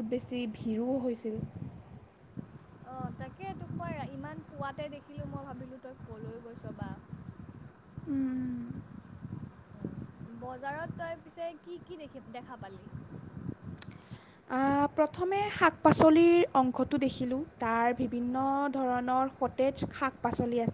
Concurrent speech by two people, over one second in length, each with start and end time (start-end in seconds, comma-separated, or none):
none